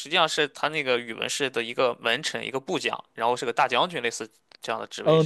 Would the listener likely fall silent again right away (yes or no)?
no